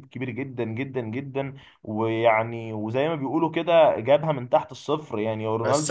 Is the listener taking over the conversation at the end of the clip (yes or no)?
yes